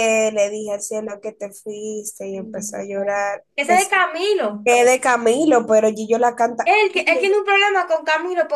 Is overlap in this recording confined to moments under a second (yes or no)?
yes